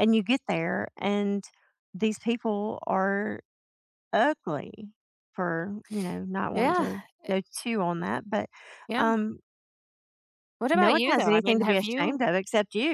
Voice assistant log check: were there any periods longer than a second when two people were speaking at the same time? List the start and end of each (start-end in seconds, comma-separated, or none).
10.7-12.2